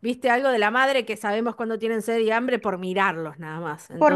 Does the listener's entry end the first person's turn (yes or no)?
yes